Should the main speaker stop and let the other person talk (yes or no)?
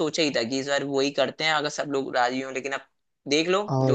yes